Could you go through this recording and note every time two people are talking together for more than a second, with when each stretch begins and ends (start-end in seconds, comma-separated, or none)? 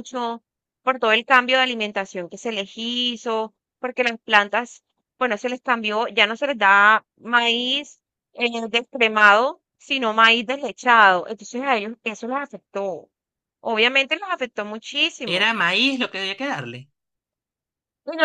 none